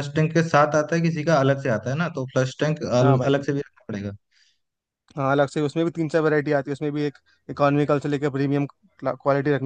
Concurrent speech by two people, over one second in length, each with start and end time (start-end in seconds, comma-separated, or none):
none